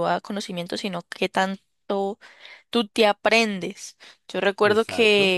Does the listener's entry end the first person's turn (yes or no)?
no